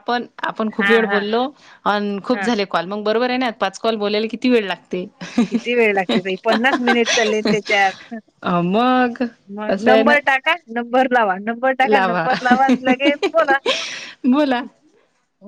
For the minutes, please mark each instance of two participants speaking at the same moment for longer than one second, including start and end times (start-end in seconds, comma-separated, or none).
6.1-7.5